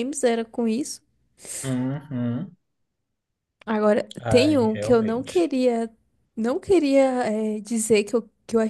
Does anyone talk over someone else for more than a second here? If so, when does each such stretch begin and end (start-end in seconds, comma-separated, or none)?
4.2-5.5